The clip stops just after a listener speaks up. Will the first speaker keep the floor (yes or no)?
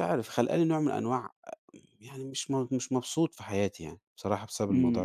no